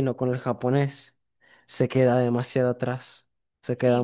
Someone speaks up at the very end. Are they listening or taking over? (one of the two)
taking over